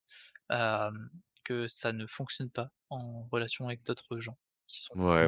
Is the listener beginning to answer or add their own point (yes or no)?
yes